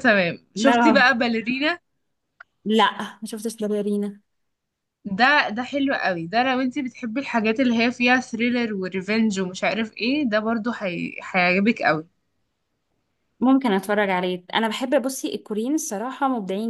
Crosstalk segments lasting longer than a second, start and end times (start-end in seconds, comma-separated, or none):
none